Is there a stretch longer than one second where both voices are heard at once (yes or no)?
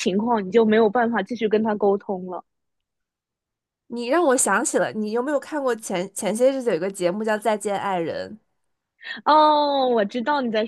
no